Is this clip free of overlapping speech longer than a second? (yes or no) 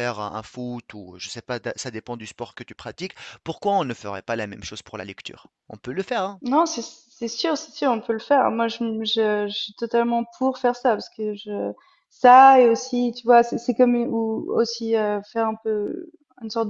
yes